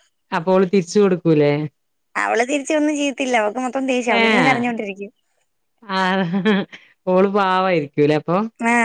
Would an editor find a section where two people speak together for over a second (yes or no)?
no